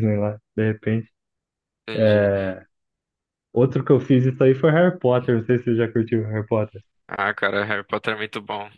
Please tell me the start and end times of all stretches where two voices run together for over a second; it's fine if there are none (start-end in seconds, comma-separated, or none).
none